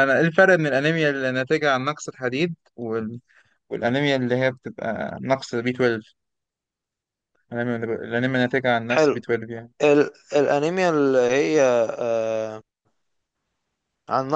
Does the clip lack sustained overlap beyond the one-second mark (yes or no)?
yes